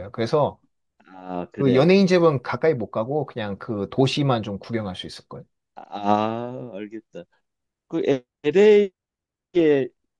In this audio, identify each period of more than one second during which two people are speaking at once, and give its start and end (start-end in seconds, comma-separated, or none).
none